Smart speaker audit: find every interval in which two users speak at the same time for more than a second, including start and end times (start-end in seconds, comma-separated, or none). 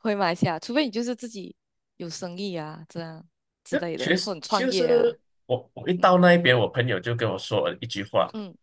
3.7-5.2